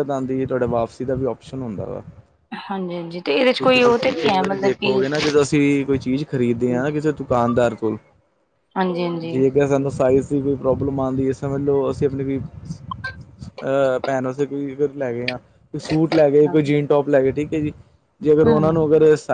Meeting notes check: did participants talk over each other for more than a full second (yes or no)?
yes